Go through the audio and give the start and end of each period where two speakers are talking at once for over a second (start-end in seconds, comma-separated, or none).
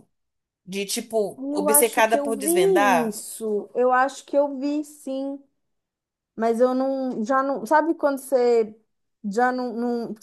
1.4-3.2